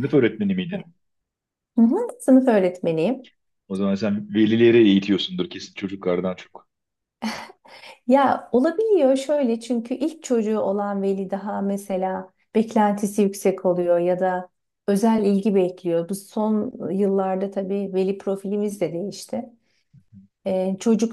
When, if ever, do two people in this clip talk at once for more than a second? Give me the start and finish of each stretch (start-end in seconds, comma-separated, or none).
none